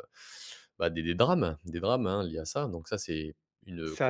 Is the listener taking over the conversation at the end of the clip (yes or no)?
yes